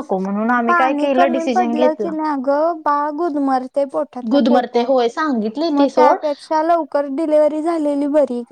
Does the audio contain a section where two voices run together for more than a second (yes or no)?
yes